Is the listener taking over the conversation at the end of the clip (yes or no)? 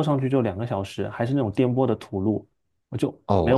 yes